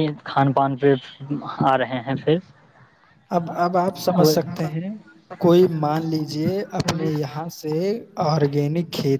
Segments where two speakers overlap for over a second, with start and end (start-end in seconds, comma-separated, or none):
none